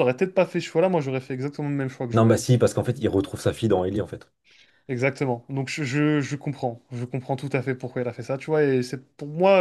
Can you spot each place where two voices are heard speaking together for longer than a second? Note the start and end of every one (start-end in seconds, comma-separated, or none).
none